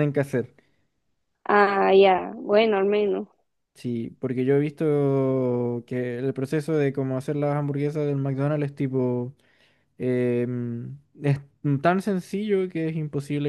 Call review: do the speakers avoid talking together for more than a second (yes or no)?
yes